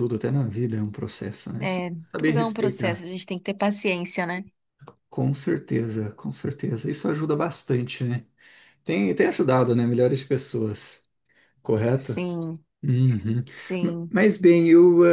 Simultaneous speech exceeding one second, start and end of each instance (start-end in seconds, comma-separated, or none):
1.6-3.1